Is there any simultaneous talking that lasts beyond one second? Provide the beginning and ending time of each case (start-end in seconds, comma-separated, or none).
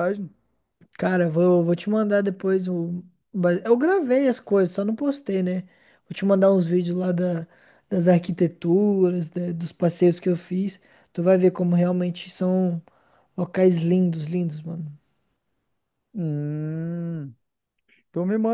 none